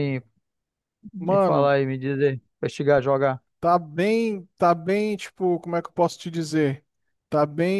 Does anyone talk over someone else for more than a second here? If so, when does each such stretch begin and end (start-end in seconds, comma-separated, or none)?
none